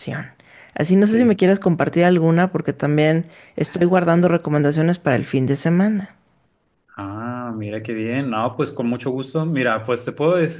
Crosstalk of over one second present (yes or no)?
no